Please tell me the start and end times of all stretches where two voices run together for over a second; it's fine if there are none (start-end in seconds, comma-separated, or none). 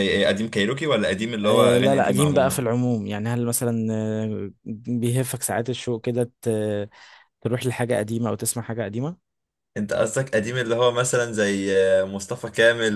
1.4-2.7